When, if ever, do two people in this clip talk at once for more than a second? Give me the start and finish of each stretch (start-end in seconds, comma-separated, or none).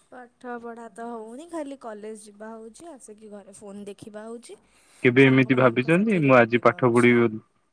5.2-7.1